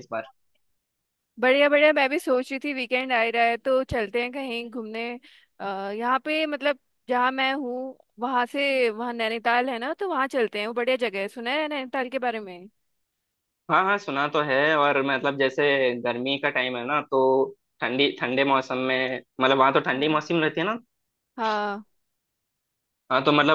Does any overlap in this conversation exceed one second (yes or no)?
no